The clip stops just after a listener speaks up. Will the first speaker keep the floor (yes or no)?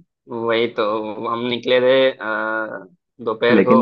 no